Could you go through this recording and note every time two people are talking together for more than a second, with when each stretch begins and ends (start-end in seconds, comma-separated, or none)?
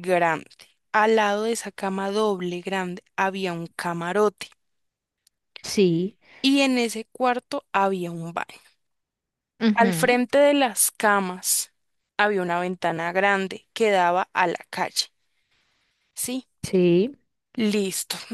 none